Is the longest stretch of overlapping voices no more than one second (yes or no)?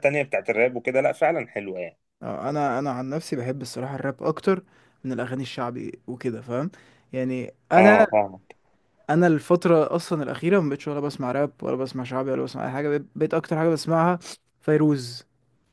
yes